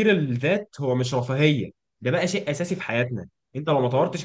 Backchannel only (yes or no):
yes